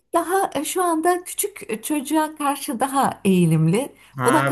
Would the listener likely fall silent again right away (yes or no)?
no